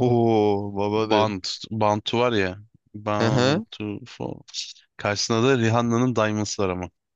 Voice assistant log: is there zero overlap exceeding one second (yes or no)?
yes